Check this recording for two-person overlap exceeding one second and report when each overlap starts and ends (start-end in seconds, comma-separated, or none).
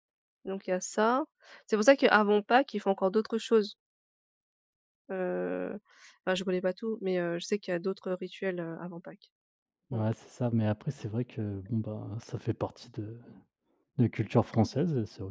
none